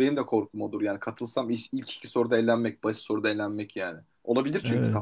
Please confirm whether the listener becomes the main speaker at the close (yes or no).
yes